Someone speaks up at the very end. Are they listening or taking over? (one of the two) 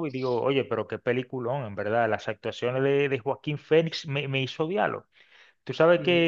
listening